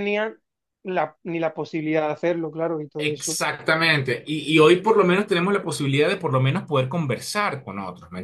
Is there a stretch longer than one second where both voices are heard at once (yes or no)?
no